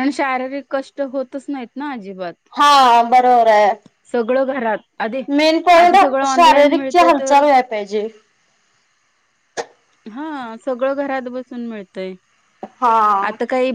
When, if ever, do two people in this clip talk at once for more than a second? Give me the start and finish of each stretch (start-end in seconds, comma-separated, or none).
5.8-7.4